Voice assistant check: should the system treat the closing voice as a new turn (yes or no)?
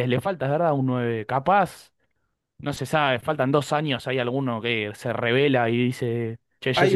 yes